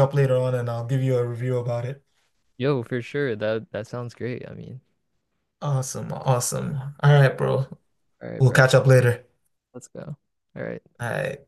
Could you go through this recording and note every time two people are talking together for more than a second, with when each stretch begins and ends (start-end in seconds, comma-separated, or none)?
none